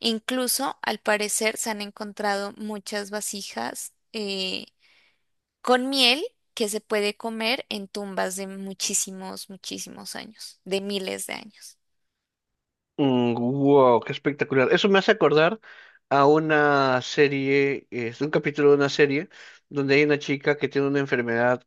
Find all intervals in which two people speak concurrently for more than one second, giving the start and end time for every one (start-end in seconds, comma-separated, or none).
none